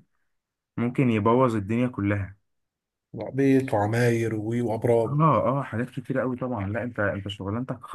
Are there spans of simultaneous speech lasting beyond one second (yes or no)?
no